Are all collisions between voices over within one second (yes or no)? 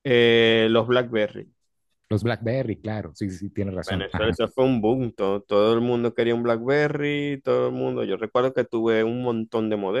yes